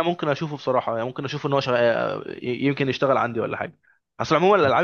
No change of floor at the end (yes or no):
yes